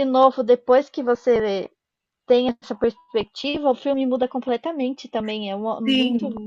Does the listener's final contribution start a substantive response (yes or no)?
yes